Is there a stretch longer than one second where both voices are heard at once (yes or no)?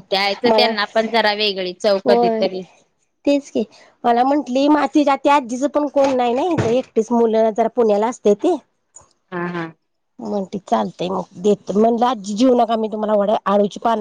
no